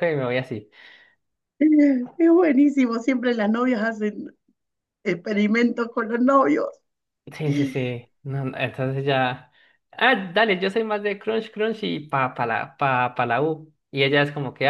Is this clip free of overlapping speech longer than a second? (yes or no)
yes